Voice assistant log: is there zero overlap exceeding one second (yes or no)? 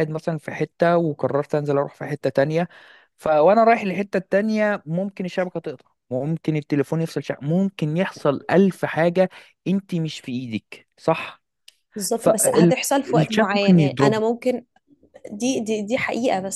no